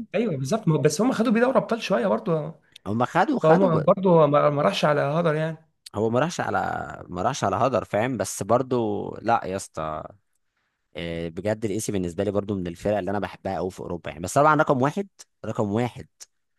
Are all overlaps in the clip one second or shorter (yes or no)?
yes